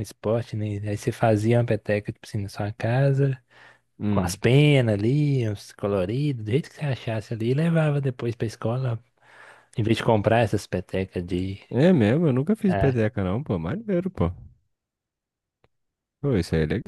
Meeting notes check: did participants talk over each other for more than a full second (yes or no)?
no